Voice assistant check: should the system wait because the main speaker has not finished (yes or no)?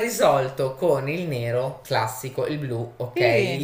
yes